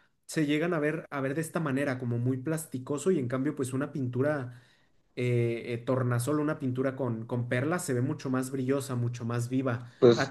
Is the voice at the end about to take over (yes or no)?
no